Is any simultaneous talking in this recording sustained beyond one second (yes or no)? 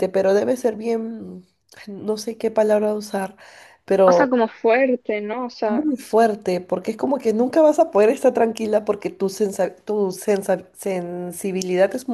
no